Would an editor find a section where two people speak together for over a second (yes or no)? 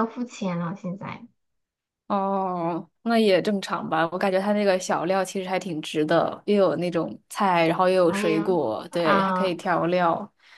yes